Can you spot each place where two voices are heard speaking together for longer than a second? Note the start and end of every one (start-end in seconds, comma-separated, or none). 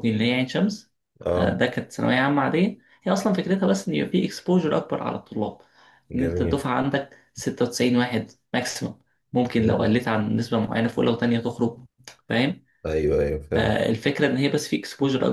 none